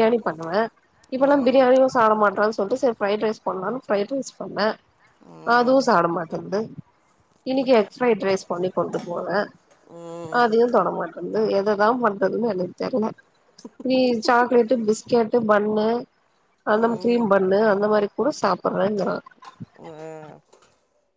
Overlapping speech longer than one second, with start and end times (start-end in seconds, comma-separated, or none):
none